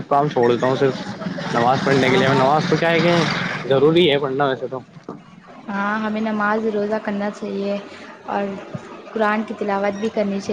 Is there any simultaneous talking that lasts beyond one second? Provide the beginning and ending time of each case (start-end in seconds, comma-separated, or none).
none